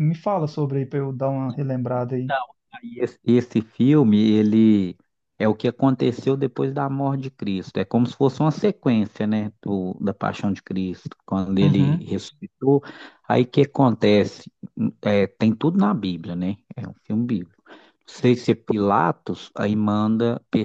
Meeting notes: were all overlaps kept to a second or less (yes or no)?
yes